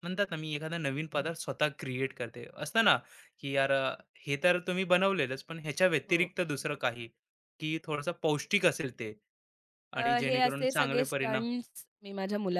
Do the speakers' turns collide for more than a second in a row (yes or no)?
yes